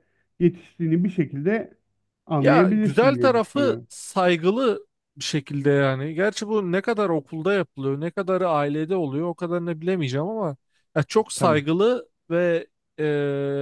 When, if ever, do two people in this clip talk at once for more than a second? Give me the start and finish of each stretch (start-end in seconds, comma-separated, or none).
2.4-3.9